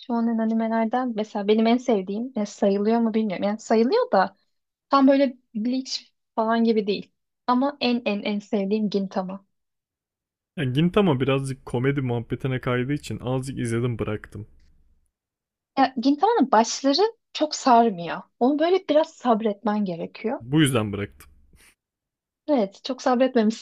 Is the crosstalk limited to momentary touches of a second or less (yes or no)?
yes